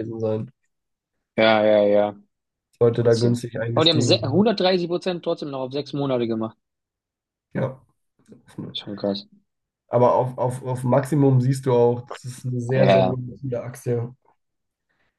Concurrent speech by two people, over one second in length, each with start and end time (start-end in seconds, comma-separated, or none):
3.0-4.4